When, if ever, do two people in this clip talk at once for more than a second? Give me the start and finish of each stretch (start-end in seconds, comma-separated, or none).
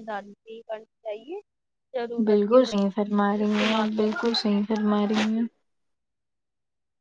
2.2-4.1